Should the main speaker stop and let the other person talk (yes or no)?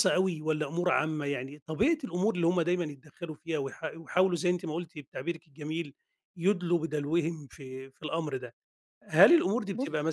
no